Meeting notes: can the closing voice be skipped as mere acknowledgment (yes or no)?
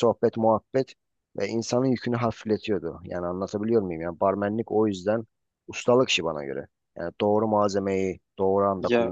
no